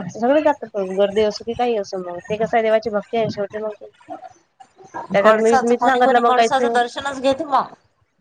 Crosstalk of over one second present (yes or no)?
yes